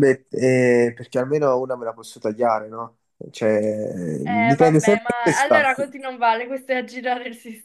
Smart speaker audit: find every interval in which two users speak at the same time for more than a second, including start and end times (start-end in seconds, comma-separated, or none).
4.3-5.7